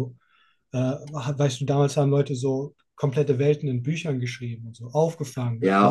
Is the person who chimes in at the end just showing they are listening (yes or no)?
no